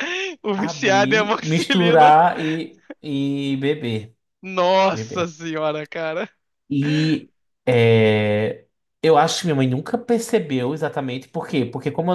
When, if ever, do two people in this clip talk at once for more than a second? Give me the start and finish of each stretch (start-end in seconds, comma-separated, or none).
0.6-2.1